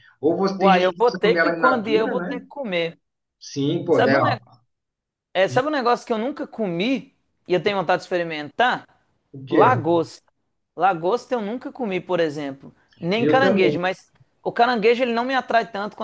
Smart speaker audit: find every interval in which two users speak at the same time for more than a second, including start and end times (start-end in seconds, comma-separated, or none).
0.6-2.5